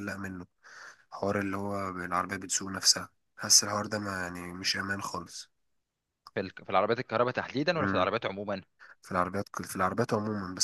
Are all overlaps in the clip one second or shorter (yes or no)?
yes